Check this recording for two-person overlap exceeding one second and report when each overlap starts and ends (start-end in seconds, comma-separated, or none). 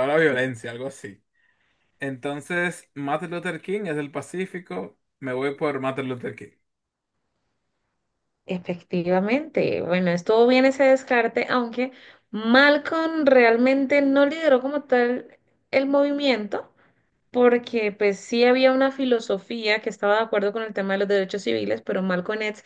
none